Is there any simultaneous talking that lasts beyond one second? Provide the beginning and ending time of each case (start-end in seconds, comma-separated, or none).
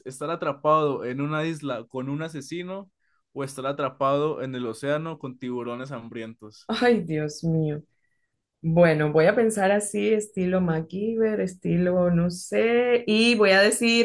none